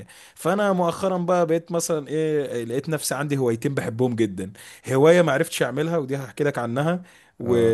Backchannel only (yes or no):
yes